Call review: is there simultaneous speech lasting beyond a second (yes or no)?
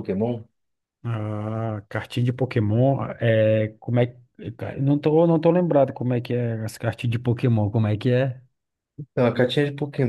no